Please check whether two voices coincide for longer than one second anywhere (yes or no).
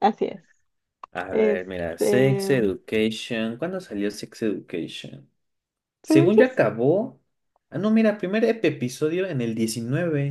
yes